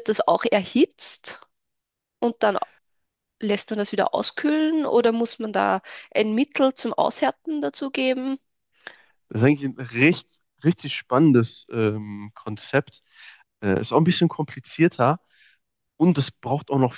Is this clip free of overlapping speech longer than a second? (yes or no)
yes